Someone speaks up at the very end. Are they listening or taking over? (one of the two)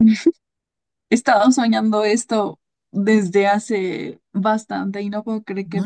taking over